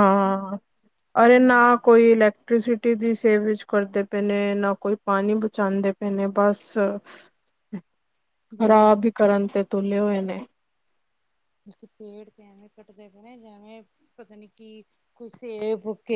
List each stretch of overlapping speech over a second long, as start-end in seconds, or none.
none